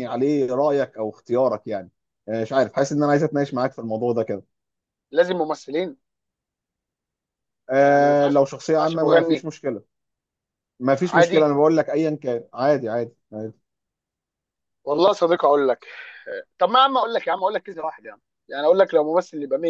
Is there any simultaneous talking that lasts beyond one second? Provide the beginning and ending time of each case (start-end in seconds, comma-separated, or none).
7.8-9.5